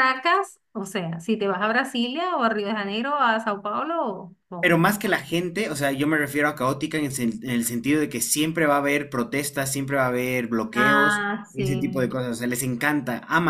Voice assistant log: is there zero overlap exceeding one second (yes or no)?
no